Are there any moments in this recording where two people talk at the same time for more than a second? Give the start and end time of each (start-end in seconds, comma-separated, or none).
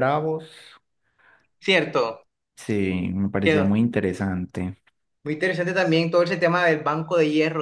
none